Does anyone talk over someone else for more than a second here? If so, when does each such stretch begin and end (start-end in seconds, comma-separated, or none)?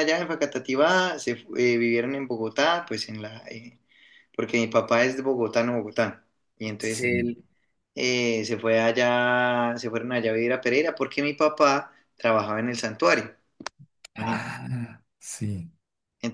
none